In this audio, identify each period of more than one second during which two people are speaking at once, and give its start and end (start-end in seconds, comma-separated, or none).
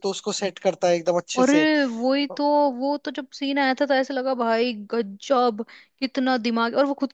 none